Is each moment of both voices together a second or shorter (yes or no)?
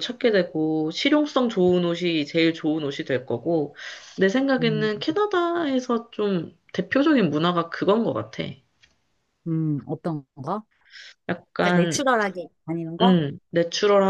yes